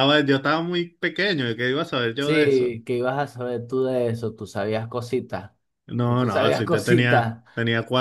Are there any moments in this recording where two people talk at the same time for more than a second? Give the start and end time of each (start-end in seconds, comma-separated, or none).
6.0-7.4